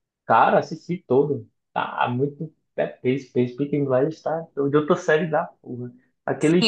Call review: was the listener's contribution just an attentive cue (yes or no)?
no